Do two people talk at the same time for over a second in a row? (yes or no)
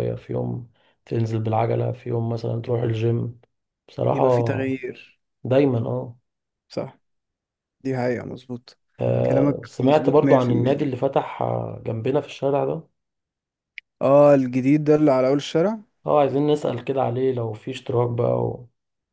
yes